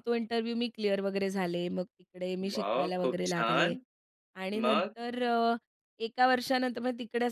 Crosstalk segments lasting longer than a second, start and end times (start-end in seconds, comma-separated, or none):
2.5-3.8